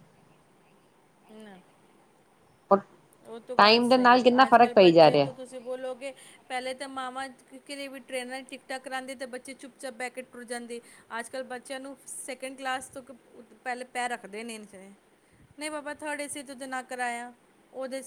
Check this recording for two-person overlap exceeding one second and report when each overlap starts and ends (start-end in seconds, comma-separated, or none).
3.6-5.3